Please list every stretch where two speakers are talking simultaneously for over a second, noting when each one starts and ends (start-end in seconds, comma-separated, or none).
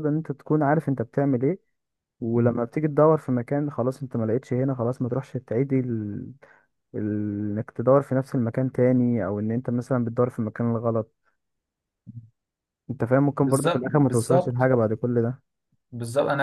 13.4-14.7